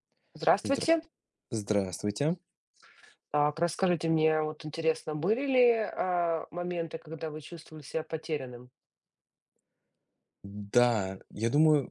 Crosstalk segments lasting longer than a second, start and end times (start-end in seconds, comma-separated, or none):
none